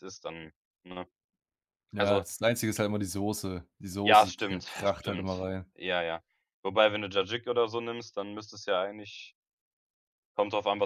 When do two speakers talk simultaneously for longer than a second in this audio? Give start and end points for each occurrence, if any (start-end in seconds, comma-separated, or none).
4.0-5.3